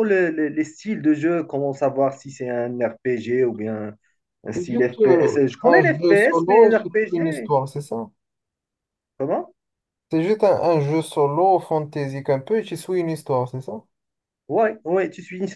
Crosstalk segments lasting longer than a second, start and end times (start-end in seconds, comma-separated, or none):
4.5-7.5